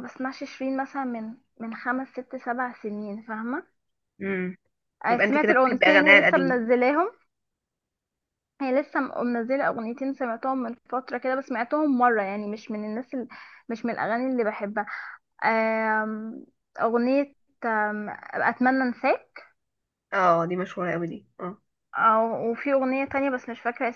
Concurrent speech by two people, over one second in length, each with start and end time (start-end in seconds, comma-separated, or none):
5.1-6.6